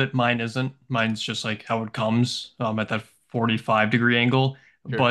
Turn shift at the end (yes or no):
no